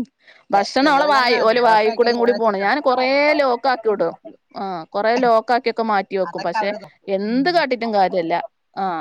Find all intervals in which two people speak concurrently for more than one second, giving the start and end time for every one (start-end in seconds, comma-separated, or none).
0.8-2.7